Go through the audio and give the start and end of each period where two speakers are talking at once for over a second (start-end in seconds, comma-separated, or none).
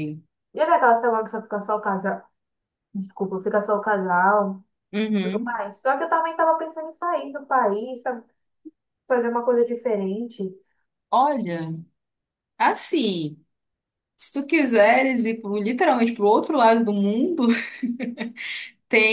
none